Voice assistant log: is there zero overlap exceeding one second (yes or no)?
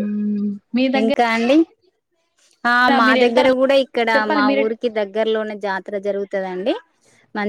yes